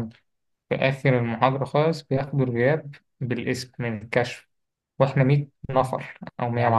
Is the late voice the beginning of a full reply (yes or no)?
yes